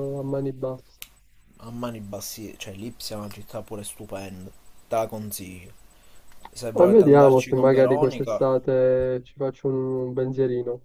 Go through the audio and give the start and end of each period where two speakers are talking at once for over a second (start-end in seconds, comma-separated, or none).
6.7-8.4